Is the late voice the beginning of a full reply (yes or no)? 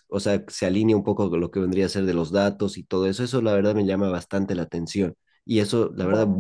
no